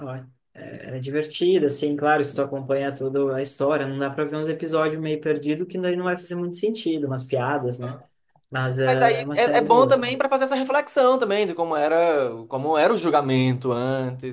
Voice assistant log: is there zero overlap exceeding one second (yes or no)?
no